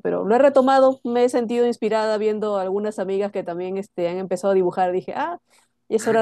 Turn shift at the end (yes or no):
yes